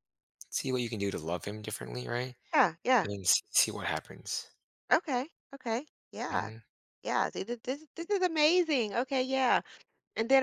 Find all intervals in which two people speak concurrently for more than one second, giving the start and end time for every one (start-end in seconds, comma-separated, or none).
none